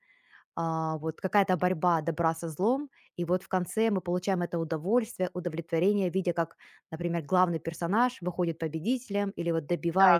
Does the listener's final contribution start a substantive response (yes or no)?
yes